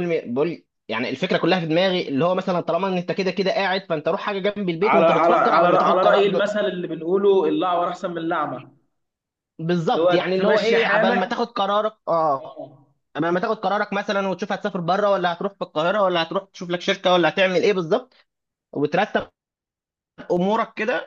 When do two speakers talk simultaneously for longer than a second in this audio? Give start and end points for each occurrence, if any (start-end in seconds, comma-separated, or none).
4.8-6.4, 9.9-11.3